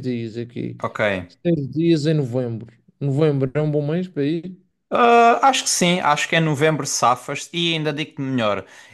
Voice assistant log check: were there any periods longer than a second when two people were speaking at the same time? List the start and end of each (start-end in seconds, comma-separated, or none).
none